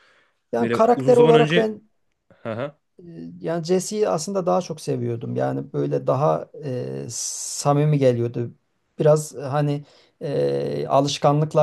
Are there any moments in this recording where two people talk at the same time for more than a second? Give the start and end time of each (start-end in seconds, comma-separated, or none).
0.5-1.8